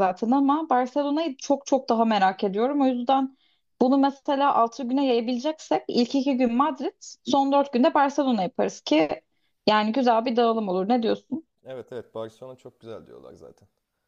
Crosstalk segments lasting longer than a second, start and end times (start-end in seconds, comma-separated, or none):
none